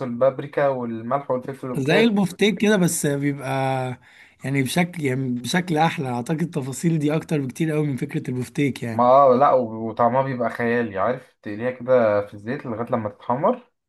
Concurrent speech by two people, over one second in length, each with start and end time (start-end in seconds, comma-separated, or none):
none